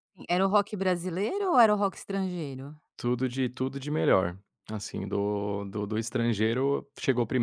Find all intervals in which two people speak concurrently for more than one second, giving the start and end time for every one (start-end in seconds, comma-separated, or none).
none